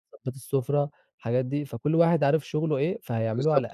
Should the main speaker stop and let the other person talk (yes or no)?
yes